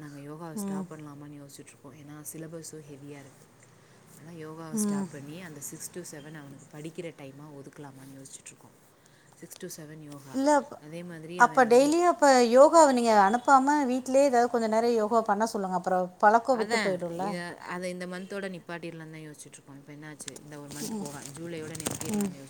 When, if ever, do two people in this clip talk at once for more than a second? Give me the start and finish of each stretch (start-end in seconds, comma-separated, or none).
none